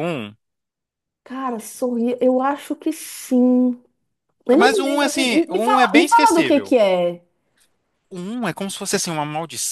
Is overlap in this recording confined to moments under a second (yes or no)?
no